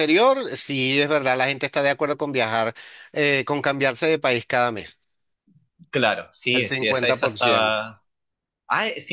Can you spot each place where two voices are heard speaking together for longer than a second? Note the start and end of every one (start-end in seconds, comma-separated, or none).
6.5-7.8